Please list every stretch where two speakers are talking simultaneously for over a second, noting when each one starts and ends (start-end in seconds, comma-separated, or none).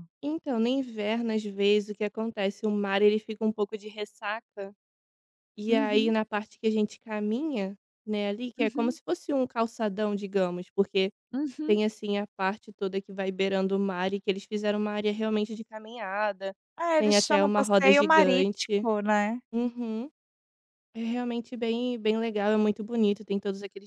17.0-18.9